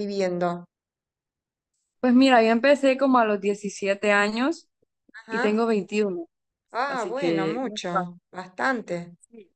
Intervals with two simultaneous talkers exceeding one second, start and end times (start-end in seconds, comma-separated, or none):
6.9-8.1